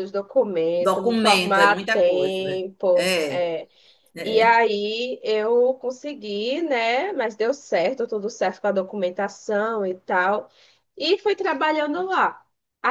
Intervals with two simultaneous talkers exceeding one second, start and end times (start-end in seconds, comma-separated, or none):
0.8-3.5